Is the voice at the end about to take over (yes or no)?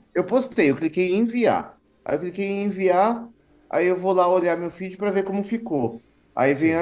no